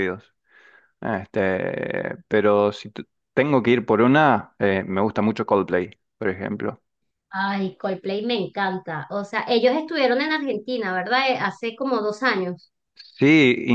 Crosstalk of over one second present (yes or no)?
no